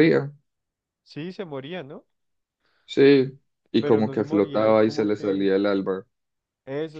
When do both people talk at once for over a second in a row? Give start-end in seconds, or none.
3.8-5.4